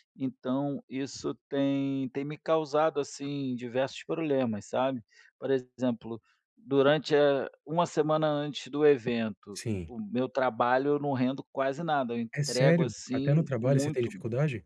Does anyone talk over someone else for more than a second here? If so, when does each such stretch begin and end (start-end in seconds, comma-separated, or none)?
12.3-14.1